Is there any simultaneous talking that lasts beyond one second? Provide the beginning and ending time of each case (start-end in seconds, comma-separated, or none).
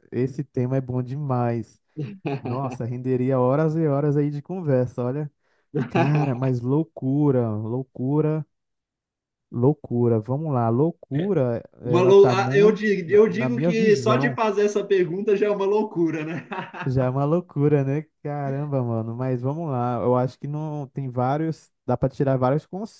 11.8-14.4